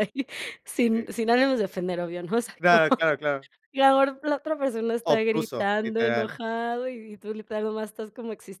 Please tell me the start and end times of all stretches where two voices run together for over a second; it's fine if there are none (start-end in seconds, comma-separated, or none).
5.0-6.4